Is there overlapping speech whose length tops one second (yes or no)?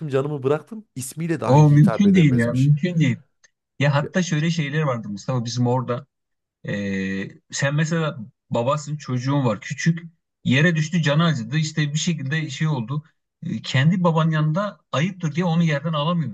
yes